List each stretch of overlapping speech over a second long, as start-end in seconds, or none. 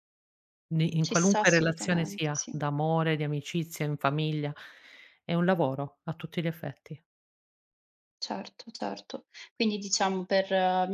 1.0-2.5